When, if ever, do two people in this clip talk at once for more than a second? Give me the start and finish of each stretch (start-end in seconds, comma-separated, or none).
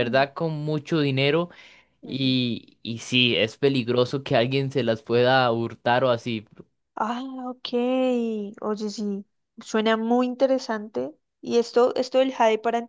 none